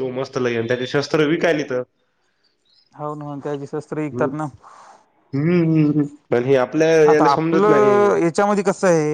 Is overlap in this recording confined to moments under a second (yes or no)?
yes